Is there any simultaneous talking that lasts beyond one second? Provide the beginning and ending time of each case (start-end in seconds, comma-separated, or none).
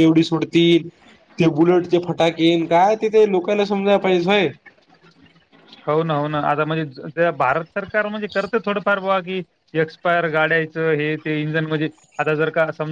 none